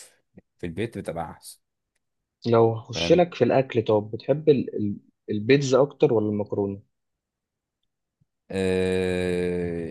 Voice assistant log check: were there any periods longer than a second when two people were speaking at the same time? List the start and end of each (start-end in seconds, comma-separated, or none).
none